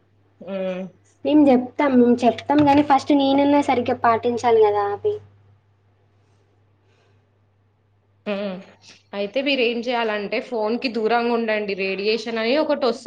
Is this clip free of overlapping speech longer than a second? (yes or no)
yes